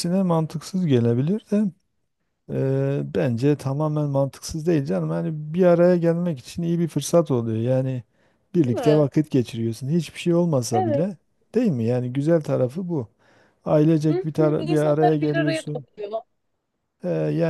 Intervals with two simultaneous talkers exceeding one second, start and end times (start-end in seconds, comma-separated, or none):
14.1-15.9